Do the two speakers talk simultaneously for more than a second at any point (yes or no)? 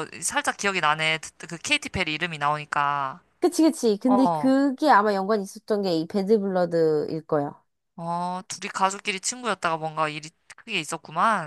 no